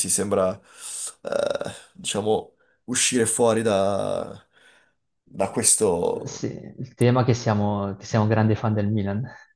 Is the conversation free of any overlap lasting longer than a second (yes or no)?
yes